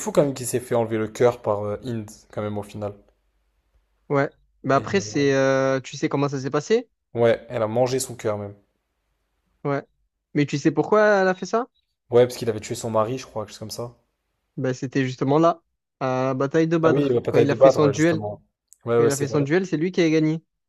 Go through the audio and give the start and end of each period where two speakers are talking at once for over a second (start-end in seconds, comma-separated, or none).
16.8-18.2